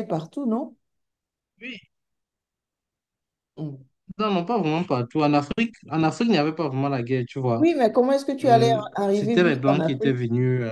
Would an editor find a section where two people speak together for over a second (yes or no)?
yes